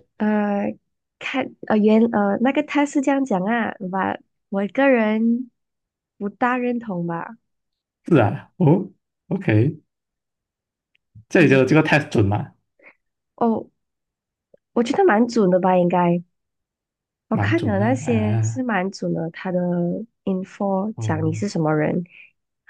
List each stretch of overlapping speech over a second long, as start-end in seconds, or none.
17.3-18.6